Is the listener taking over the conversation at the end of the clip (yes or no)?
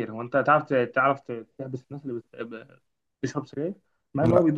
no